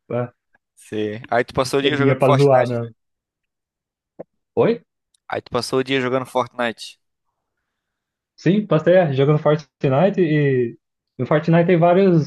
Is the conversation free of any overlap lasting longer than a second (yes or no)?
no